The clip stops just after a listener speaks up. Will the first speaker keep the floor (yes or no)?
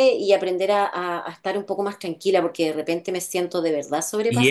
no